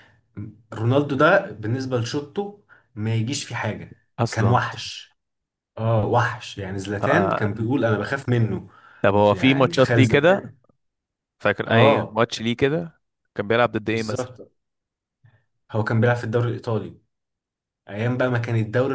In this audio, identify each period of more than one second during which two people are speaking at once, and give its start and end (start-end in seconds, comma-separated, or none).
9.3-10.5